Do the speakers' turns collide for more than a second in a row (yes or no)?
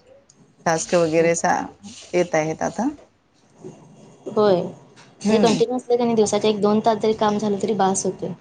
no